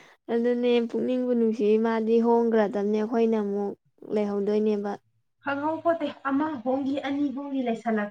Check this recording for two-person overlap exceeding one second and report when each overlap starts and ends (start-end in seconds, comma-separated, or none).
none